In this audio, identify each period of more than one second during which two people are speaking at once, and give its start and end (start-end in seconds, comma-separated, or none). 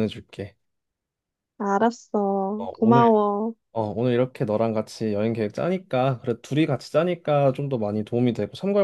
none